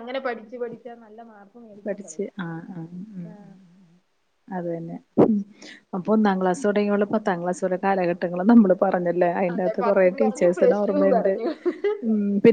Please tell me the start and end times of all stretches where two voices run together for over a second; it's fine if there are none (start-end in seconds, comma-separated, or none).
9.5-11.3